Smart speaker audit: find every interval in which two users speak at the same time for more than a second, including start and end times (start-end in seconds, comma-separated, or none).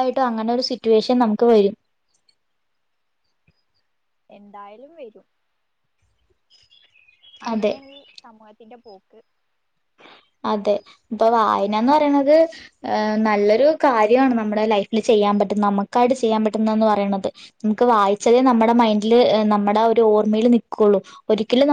none